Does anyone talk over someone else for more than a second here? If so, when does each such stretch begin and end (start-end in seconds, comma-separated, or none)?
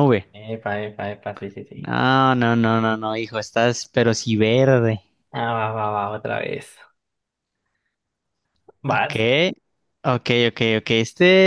none